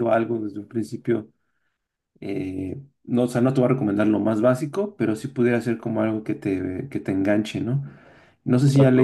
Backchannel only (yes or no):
yes